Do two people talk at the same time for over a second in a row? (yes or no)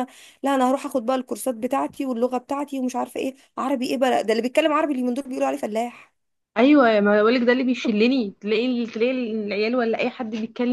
no